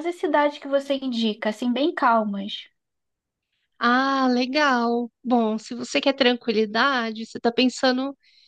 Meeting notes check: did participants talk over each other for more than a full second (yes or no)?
no